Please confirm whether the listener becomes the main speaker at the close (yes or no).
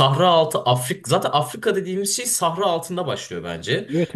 yes